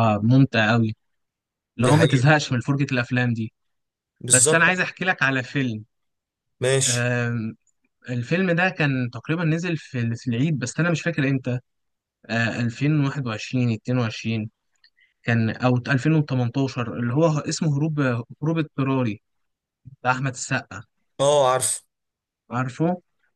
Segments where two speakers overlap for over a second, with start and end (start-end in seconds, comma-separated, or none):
none